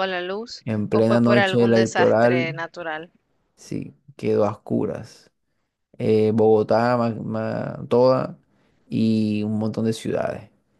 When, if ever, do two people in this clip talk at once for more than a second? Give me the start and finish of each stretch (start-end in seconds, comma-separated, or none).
0.6-2.6